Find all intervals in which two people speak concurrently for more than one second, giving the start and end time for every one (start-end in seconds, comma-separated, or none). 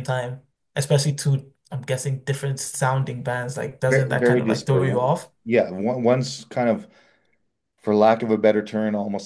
3.9-5.3